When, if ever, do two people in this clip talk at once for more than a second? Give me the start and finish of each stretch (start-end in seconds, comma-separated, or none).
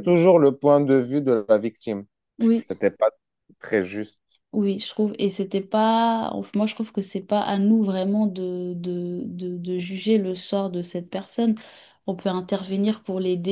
none